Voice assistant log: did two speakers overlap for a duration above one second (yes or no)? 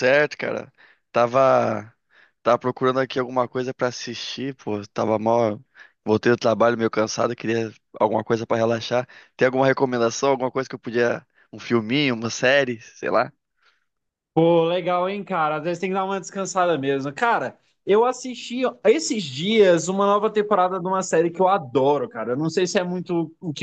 no